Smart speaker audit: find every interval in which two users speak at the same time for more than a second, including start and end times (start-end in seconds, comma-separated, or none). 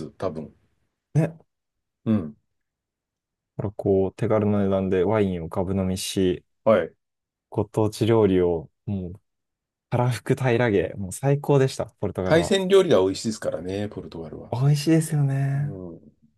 none